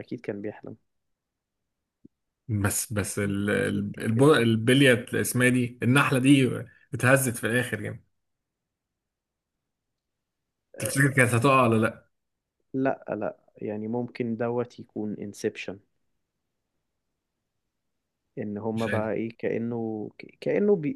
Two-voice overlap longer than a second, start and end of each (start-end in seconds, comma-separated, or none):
3.1-4.5